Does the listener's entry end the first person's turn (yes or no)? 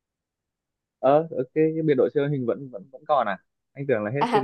yes